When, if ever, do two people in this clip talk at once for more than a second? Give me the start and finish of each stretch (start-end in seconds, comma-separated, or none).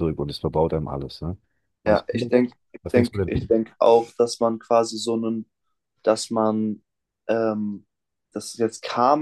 1.9-3.5